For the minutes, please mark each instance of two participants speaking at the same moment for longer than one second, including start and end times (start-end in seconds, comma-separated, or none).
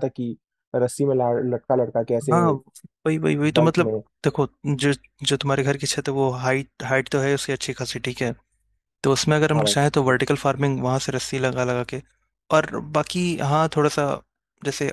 none